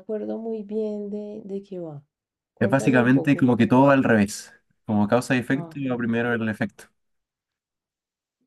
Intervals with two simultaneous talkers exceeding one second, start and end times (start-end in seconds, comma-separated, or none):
2.6-3.9